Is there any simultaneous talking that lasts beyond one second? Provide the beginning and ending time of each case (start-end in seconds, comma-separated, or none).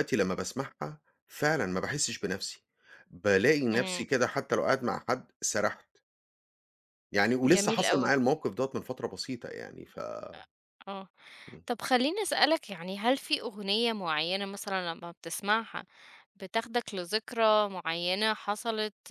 none